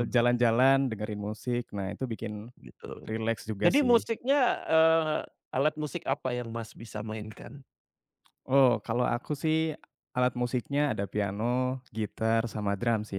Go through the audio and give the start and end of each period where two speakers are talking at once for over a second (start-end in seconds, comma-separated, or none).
none